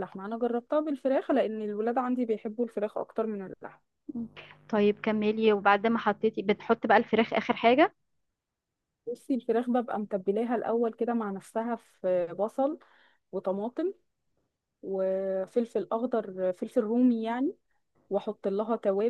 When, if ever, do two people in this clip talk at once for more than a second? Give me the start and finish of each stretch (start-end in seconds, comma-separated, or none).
none